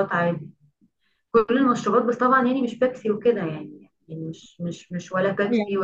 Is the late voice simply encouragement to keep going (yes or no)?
yes